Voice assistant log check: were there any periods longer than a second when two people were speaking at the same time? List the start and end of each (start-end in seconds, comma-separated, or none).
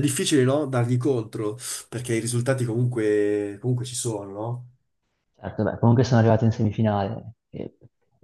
none